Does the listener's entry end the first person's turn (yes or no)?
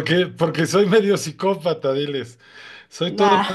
no